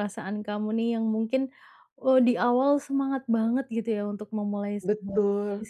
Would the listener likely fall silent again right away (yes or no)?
yes